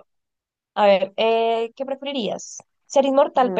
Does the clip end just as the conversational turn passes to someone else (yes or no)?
no